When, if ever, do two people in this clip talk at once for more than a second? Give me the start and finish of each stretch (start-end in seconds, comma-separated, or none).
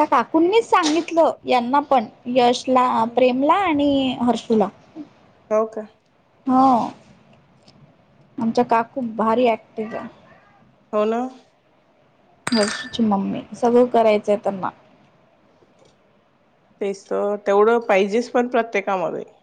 none